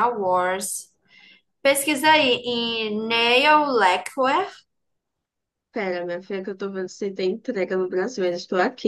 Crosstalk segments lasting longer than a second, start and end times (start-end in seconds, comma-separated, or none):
none